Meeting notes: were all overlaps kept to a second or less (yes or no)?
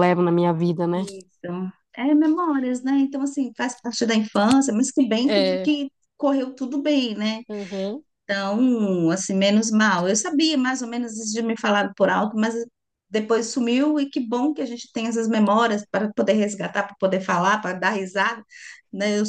yes